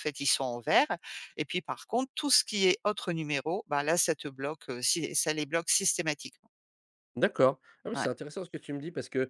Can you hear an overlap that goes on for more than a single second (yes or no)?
no